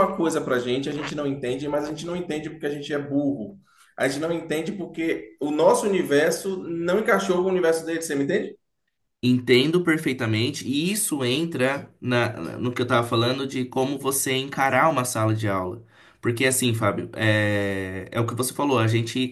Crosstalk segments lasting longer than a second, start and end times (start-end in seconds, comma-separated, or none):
none